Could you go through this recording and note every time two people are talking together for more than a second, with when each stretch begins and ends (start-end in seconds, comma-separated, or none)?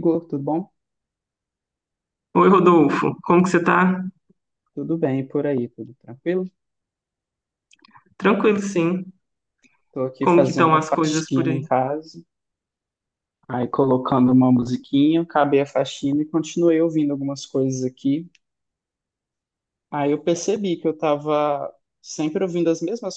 10.2-11.6